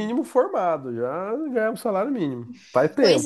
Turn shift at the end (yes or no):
yes